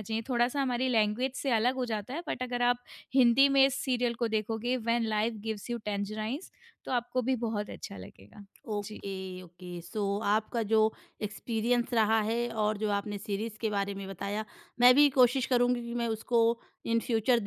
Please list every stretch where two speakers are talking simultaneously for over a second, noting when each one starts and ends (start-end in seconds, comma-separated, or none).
none